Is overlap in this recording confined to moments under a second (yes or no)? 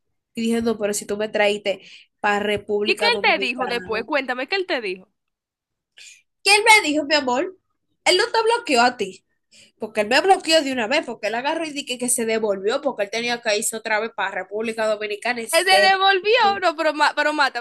no